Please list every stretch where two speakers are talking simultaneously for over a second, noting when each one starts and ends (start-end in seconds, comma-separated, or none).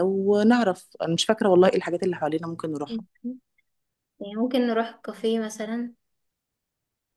none